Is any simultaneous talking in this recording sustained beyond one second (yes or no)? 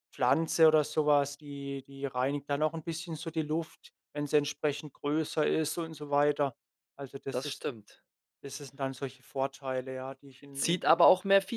no